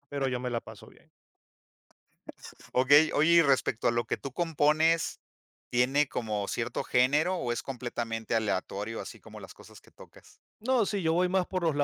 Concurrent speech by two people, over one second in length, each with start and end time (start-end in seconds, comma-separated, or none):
none